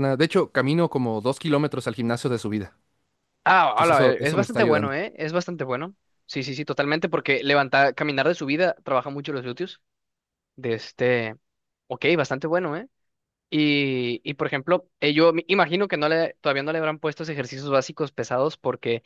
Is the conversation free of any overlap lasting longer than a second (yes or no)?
no